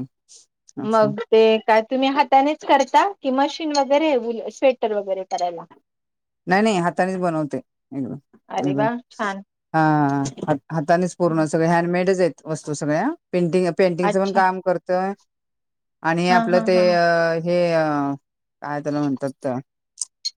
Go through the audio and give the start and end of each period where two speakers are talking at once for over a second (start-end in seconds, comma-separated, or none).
none